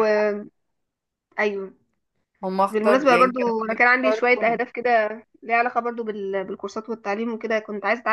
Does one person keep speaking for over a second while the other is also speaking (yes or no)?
yes